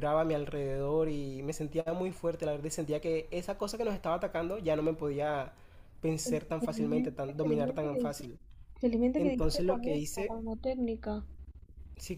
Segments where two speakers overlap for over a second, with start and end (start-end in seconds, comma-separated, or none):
6.2-8.3, 9.2-10.4